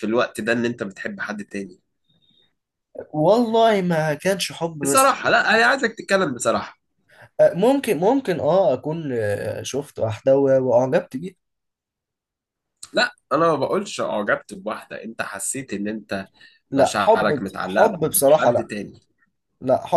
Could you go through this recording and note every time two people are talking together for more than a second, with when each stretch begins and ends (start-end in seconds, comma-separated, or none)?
16.8-18.7